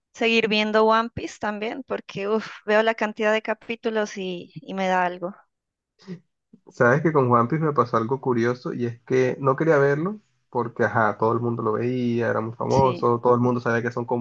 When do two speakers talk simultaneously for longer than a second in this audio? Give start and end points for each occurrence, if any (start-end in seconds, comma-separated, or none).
none